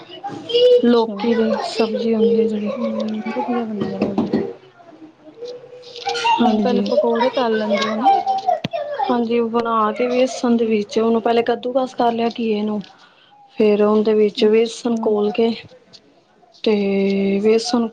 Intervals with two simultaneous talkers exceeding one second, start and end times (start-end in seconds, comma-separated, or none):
none